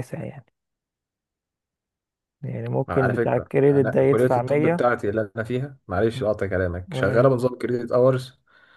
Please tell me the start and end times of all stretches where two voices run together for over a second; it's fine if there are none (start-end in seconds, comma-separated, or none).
2.9-4.9